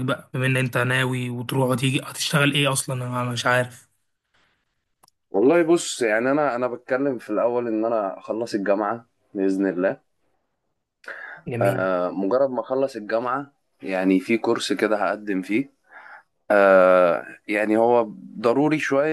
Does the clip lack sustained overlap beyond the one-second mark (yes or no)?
yes